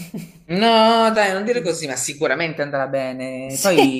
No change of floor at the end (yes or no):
yes